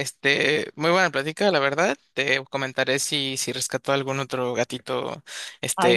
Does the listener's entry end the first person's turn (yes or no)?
no